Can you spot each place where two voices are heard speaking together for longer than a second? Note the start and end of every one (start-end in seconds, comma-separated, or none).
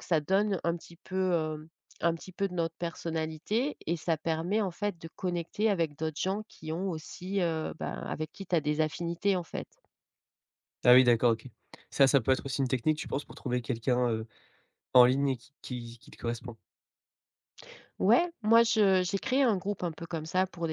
none